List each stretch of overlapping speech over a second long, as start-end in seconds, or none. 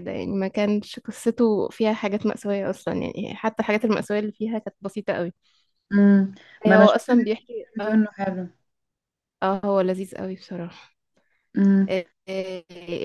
6.7-8.0